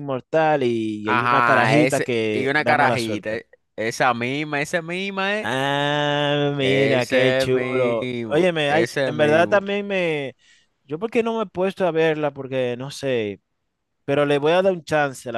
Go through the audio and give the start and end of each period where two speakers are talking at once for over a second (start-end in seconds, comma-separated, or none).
1.0-3.4, 6.6-9.6